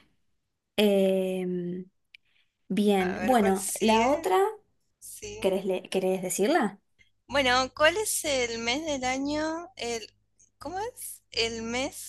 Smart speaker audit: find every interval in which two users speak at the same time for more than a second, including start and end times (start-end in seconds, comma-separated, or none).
3.0-4.3